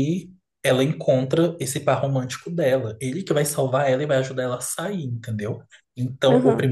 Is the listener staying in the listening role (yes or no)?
yes